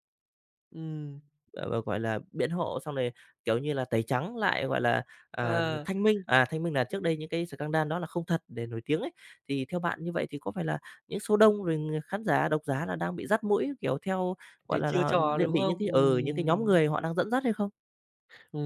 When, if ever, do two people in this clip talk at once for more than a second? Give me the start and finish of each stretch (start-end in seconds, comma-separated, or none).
14.7-16.8